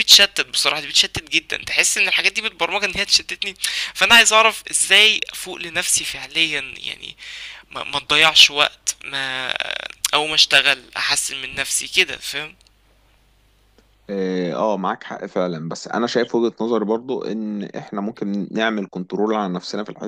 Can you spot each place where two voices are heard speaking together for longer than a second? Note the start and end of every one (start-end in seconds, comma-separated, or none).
none